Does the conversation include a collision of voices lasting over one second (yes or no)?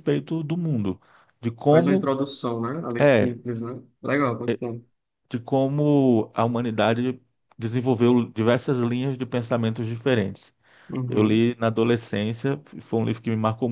no